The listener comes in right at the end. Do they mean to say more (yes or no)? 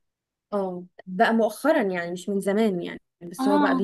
no